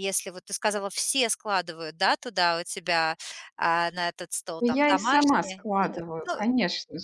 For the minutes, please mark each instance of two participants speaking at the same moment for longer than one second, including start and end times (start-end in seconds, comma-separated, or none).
4.6-6.4